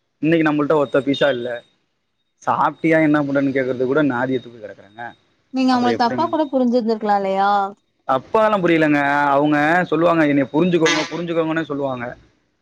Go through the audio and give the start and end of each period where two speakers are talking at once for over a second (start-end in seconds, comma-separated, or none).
none